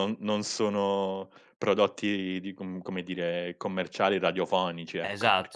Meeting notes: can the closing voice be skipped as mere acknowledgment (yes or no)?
no